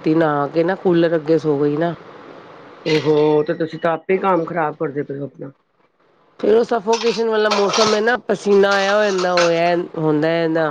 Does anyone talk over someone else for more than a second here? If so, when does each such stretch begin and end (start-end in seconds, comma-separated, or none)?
none